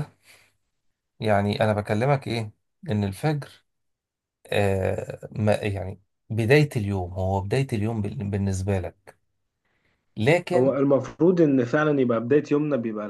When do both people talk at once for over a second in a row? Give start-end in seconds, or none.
none